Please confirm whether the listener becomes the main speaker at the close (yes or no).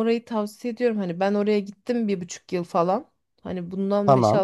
no